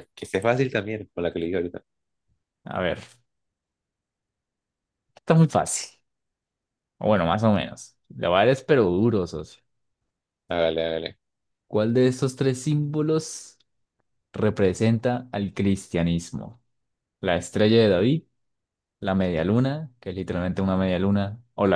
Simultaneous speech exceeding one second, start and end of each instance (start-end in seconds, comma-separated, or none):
none